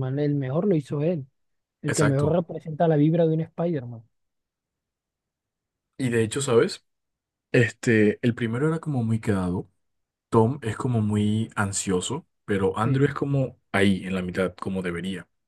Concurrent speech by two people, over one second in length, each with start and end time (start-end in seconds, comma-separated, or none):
none